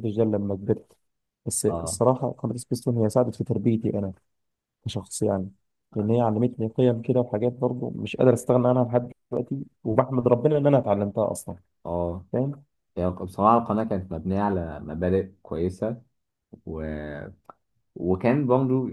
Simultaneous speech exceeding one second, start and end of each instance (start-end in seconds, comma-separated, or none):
none